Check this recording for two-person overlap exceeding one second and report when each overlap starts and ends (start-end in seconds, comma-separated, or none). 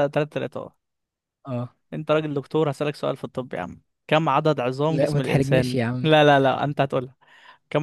4.9-6.1